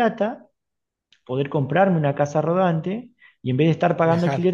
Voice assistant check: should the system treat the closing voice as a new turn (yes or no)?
no